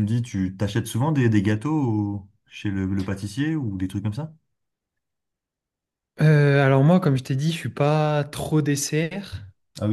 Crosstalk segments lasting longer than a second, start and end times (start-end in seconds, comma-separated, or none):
none